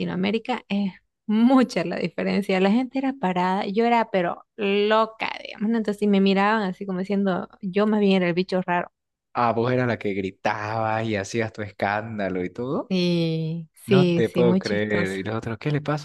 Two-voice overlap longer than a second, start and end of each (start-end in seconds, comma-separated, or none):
13.8-15.2